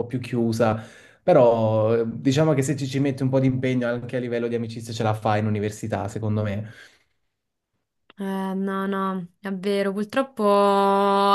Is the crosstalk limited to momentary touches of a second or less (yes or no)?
yes